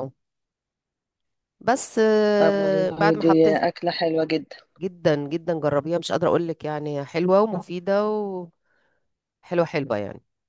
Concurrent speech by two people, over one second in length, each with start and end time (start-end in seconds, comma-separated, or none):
2.4-3.8